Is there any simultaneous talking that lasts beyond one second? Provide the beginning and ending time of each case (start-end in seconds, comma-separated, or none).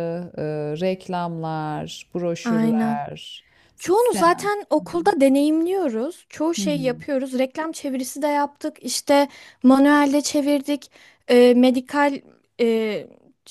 3.8-5.1